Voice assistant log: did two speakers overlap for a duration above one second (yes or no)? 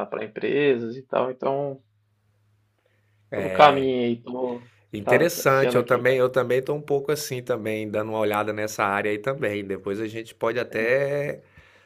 yes